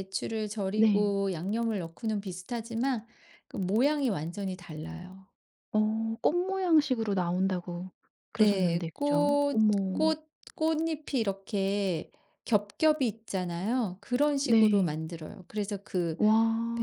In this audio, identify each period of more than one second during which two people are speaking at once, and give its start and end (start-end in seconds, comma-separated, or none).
8.4-10.1